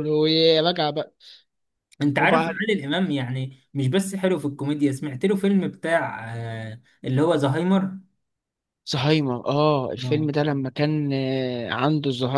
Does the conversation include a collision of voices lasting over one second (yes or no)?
no